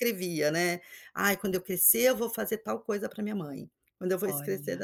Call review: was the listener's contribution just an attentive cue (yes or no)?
yes